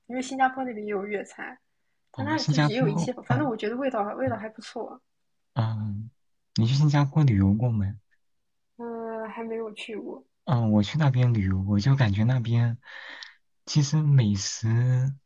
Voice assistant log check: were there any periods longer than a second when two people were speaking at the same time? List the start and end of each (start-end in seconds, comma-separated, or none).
2.1-3.5